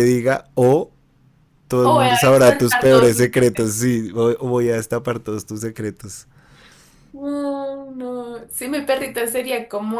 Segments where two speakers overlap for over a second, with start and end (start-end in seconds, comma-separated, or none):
1.8-3.4